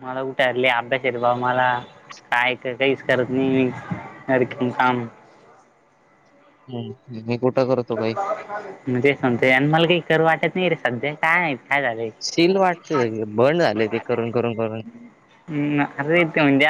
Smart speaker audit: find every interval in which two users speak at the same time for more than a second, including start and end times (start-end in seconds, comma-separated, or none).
none